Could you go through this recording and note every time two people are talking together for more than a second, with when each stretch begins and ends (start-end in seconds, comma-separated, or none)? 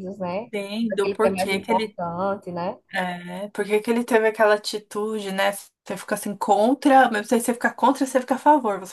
0.5-2.0